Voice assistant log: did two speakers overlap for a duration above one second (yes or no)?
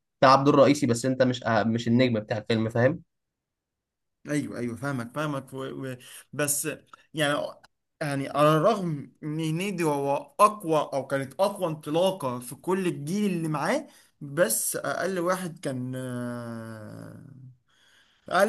no